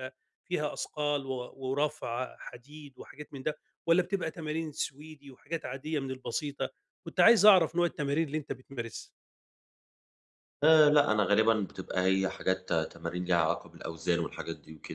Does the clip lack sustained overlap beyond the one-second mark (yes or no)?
yes